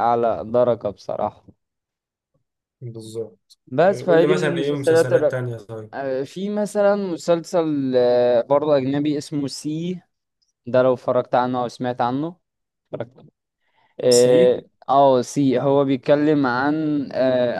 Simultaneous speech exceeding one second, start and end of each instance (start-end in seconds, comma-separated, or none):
3.7-5.1